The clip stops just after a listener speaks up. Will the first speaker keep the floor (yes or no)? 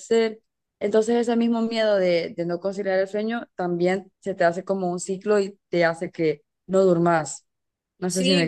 no